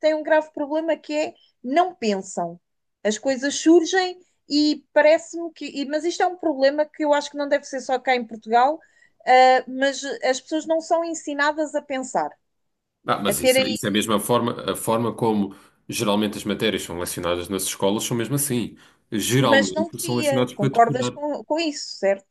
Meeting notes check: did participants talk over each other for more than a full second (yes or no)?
yes